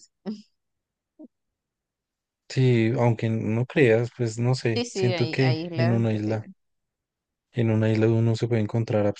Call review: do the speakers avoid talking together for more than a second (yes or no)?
no